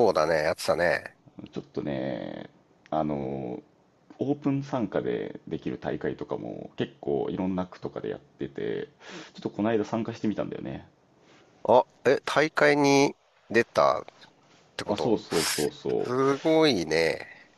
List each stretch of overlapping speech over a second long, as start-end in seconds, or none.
none